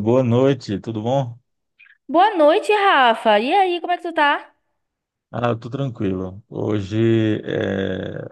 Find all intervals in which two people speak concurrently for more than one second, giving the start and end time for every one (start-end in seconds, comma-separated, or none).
none